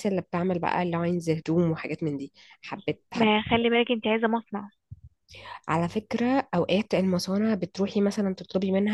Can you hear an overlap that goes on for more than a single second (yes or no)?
no